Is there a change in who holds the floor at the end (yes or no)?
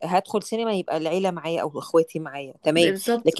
no